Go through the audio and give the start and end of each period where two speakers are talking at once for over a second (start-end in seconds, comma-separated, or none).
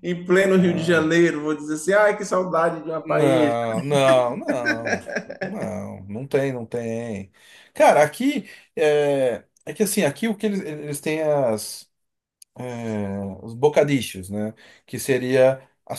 none